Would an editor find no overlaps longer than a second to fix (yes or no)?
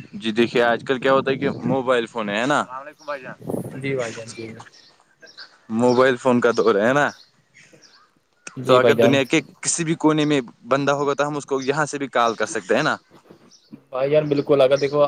yes